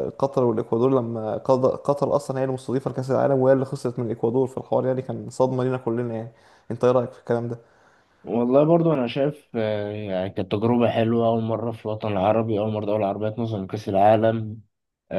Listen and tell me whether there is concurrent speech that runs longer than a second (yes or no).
no